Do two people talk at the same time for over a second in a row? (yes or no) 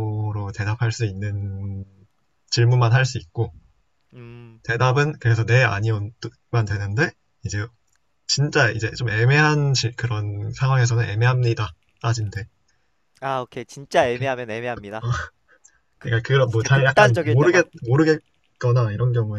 yes